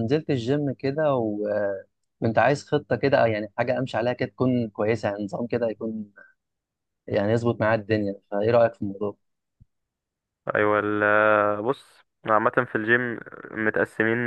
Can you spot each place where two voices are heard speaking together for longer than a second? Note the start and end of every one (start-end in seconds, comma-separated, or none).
none